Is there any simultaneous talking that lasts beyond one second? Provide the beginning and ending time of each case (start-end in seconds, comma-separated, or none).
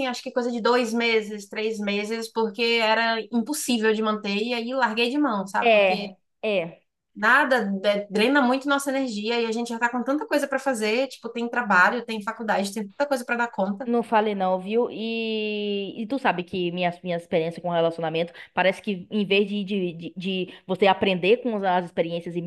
none